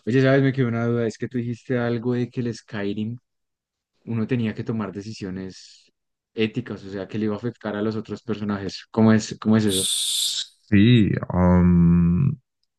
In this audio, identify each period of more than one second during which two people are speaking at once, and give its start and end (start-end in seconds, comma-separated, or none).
none